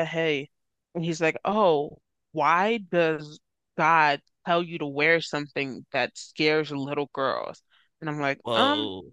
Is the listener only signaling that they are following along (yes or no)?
yes